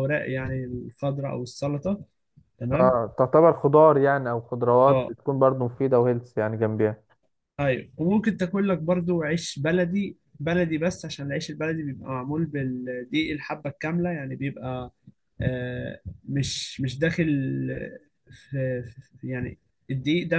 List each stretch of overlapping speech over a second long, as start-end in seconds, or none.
none